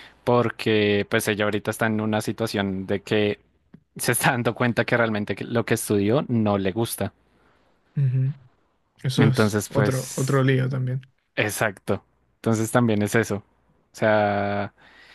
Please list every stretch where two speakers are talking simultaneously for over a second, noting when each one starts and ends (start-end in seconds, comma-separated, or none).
9.2-10.4